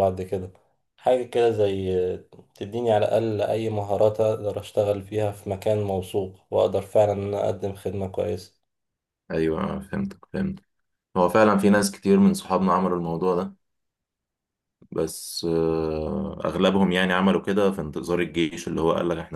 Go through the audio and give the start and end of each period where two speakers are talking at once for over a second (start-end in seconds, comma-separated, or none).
none